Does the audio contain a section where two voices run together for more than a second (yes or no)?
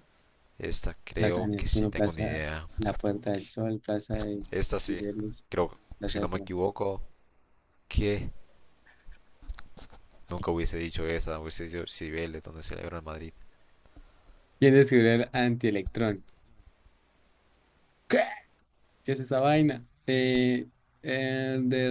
yes